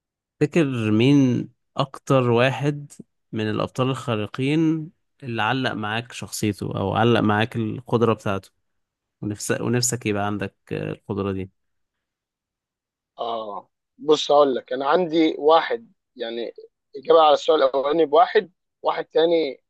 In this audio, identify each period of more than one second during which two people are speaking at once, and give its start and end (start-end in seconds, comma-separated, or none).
none